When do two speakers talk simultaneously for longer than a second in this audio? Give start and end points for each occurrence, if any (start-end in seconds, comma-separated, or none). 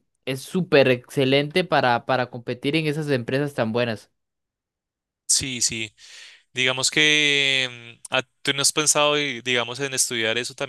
none